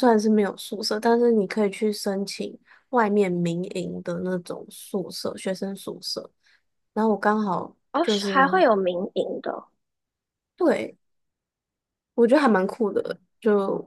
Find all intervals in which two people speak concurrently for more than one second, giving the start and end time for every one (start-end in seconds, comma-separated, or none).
none